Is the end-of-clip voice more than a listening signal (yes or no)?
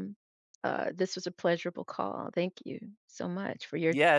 yes